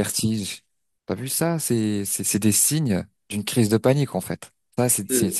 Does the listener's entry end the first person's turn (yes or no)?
no